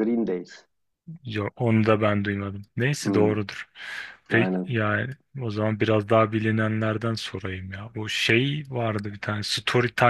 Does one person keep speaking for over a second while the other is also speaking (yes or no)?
no